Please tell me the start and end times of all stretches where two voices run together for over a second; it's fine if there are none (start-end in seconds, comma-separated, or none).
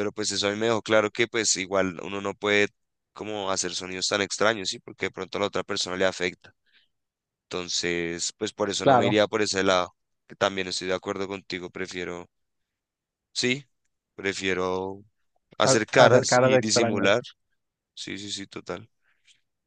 15.6-17.2